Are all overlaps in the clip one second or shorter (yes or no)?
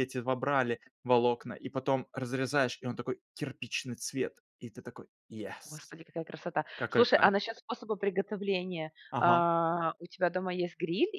yes